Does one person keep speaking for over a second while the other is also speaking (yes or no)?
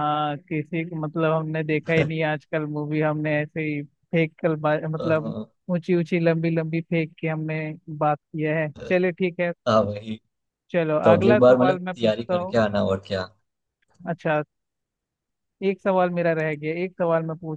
yes